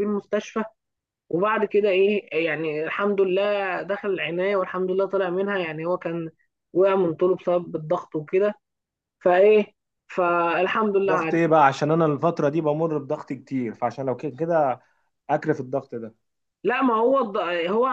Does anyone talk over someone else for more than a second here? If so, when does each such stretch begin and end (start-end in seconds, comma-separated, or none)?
none